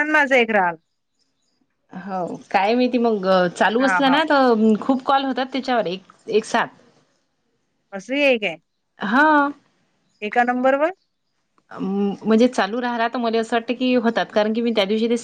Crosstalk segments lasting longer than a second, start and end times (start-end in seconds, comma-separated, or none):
none